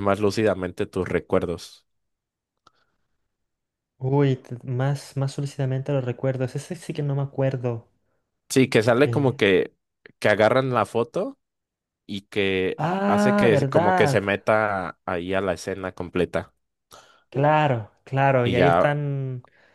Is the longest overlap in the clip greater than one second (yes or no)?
yes